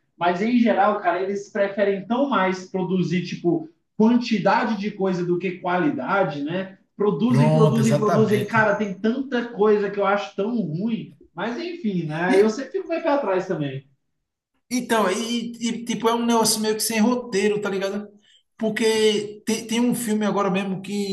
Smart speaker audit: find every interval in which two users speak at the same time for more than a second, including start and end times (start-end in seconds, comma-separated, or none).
7.3-8.6